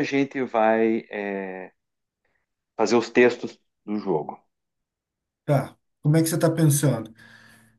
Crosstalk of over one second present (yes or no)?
no